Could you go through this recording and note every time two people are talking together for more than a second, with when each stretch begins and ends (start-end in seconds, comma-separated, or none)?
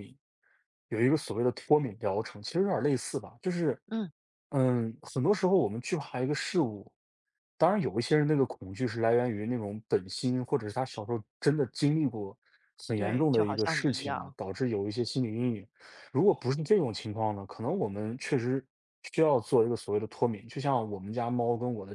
12.9-14.3